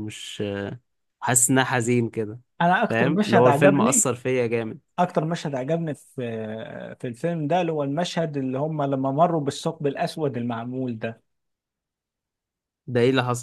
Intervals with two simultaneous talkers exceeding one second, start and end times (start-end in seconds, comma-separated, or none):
2.9-4.1